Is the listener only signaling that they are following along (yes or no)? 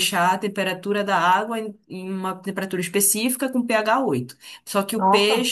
yes